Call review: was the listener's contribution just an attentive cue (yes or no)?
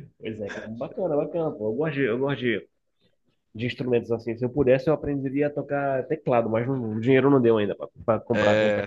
no